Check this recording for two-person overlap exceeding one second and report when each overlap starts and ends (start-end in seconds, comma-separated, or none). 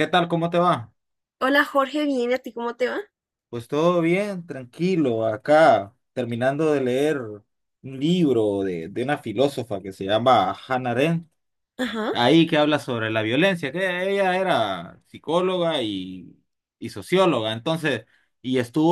none